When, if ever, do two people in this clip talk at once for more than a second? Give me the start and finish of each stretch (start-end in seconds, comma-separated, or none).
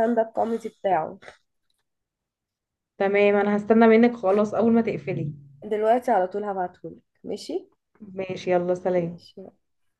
none